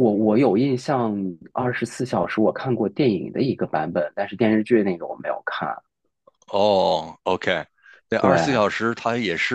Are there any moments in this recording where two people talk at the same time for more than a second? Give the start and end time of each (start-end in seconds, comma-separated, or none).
none